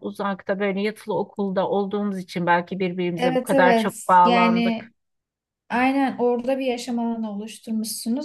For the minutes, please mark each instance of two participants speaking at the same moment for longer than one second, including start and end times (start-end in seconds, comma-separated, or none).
3.2-4.9